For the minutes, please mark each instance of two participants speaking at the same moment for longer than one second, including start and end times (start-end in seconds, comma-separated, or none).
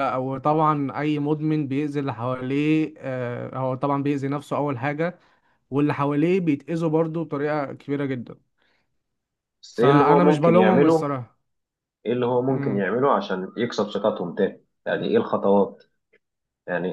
9.7-11.1